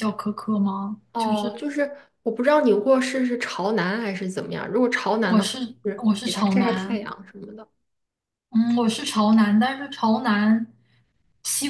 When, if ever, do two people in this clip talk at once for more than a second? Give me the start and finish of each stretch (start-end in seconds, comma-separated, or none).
5.2-7.0